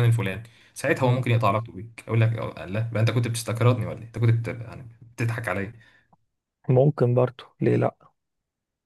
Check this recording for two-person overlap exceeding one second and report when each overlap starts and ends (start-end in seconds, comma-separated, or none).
none